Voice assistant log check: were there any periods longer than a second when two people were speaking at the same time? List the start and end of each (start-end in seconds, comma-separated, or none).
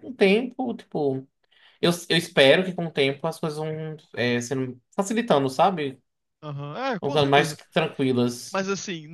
none